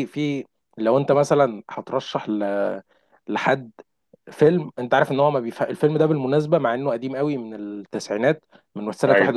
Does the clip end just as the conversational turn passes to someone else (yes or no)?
no